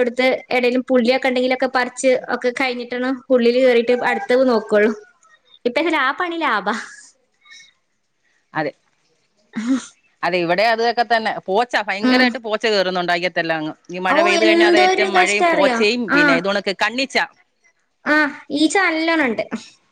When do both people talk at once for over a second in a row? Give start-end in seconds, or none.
14.1-15.8